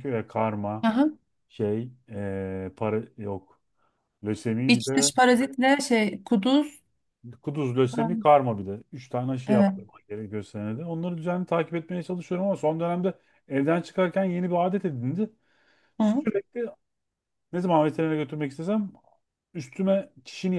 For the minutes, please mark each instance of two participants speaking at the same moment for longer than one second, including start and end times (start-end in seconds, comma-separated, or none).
none